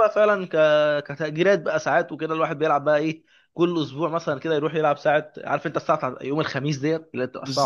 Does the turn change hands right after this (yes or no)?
yes